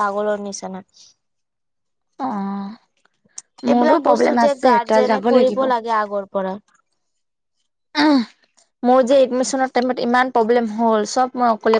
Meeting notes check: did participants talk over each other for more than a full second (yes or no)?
yes